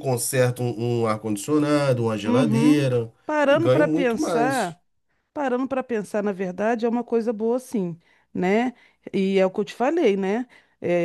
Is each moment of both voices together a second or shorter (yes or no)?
no